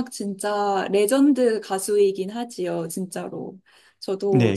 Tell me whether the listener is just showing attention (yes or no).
no